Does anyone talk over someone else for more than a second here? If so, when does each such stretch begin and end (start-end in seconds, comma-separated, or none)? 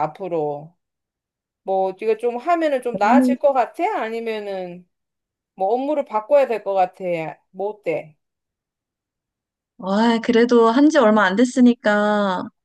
none